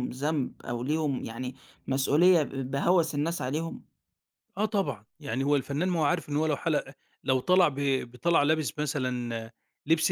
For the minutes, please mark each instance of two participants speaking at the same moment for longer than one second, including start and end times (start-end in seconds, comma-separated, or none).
none